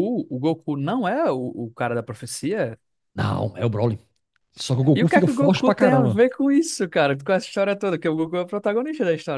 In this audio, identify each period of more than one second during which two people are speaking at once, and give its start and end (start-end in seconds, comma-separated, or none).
4.9-6.2